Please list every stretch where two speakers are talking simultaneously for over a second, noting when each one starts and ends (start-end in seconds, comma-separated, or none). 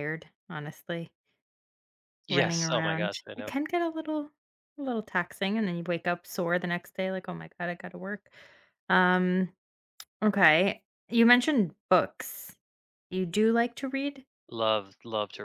2.3-3.5